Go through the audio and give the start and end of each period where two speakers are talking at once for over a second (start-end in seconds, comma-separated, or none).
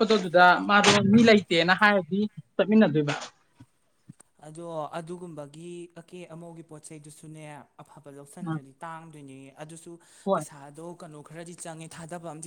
none